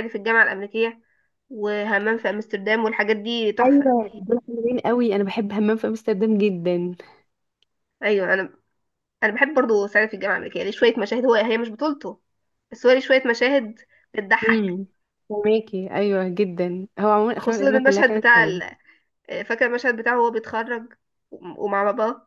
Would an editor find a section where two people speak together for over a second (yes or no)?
yes